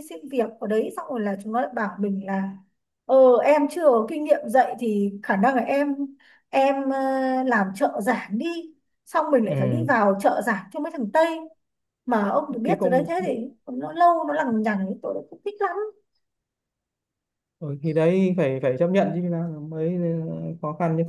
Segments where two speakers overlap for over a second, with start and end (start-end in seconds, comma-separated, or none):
none